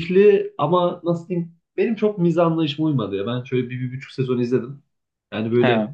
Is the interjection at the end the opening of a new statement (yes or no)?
no